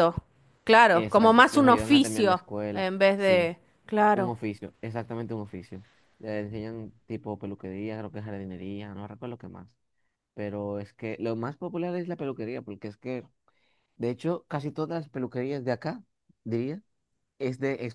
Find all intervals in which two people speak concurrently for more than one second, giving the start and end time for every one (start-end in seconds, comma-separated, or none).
0.9-3.5